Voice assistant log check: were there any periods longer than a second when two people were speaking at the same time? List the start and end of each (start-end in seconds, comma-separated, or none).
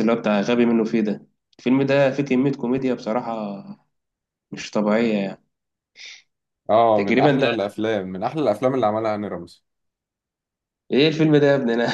none